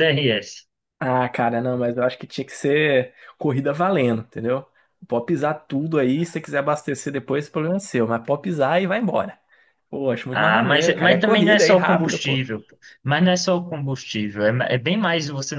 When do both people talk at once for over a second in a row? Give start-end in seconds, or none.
10.3-12.4